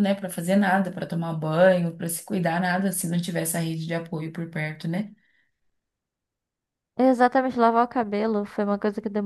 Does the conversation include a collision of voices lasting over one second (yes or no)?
no